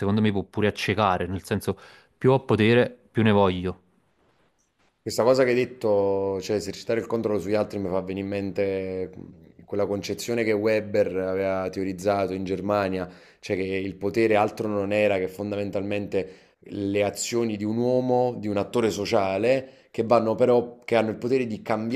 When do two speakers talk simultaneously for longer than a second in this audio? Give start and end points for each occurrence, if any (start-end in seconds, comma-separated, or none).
none